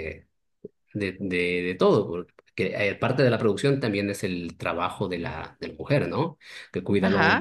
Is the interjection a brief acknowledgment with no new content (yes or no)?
yes